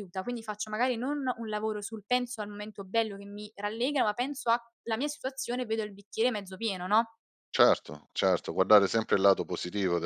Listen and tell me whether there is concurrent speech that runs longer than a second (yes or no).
no